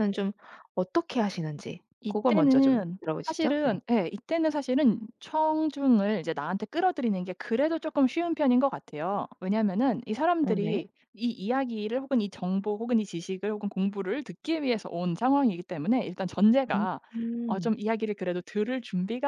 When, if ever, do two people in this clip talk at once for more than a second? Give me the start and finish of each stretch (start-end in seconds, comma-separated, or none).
2.0-3.8